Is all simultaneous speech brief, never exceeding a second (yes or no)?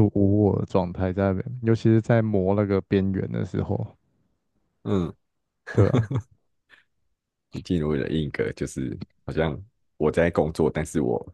yes